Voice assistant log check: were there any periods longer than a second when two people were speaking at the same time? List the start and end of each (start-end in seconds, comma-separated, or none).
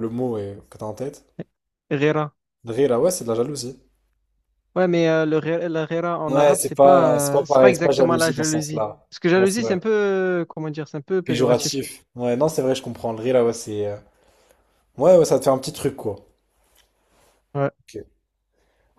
6.3-9.8